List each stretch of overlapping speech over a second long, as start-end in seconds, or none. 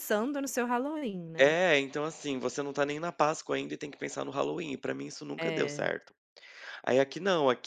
none